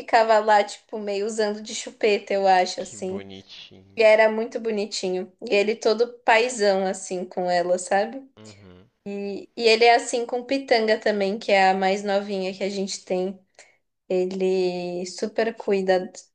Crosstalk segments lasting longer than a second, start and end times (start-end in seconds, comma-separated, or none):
none